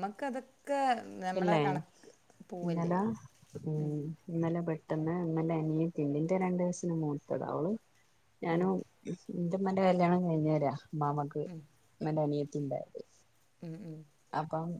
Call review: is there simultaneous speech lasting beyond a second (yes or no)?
no